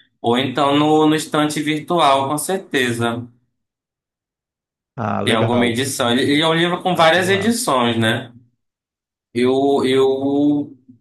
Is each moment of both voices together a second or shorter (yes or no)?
no